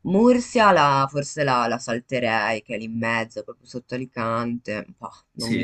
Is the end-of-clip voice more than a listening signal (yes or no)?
yes